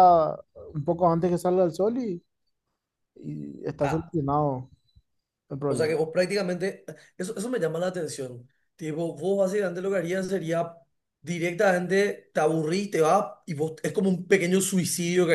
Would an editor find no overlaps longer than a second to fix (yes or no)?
yes